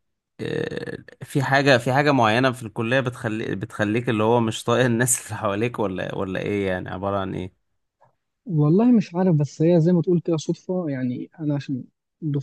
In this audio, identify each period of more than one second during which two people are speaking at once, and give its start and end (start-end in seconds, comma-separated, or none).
none